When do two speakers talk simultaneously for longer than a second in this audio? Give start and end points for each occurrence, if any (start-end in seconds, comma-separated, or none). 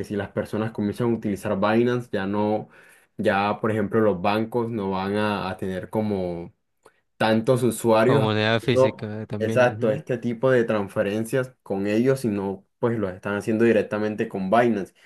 8.0-10.0